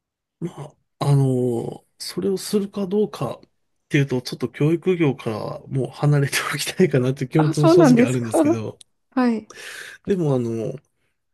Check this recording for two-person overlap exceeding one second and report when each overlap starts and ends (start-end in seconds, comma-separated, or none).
7.4-8.6